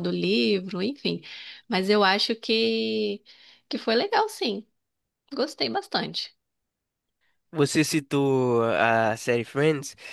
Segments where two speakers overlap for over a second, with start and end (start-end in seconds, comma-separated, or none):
none